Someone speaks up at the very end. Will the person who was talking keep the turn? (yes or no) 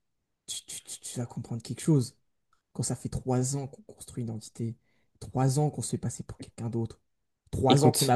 yes